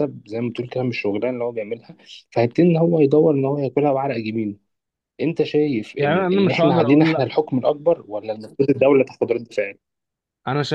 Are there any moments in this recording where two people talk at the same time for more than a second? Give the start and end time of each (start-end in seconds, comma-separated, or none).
6.0-7.3